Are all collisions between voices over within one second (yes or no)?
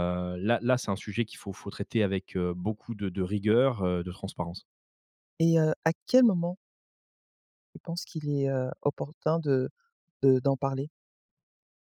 yes